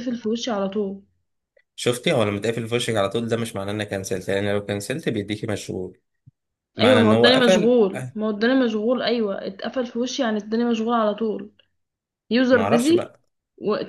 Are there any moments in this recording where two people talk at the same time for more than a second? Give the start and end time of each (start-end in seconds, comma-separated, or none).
6.8-8.2